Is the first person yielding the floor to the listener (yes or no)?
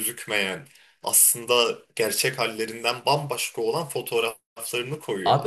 yes